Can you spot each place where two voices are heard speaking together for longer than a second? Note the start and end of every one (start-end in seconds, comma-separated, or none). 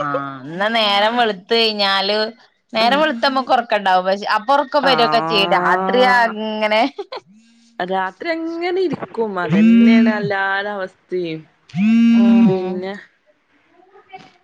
4.9-6.3